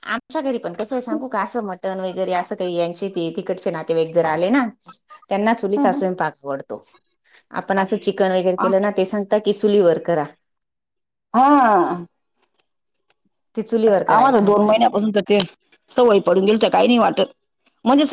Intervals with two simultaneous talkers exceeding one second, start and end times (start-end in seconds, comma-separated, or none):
none